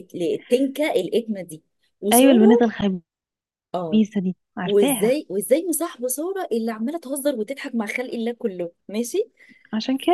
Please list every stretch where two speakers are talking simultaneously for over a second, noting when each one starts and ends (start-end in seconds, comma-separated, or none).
none